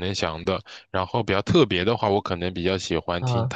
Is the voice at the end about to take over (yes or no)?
no